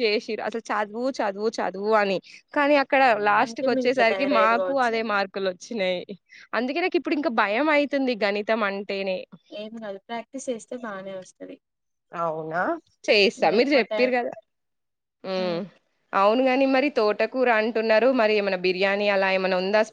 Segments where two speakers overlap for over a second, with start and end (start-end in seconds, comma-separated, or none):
3.4-4.9